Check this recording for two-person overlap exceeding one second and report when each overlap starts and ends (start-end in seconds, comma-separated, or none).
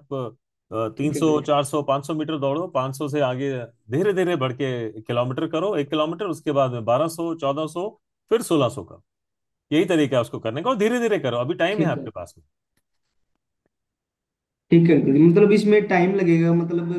none